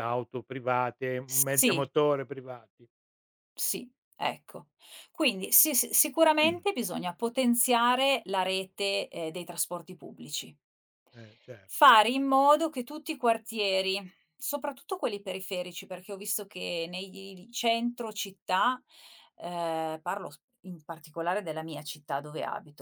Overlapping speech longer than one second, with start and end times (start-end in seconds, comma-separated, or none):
none